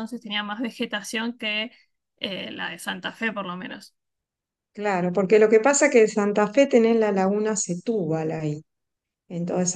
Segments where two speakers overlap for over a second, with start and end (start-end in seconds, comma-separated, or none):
none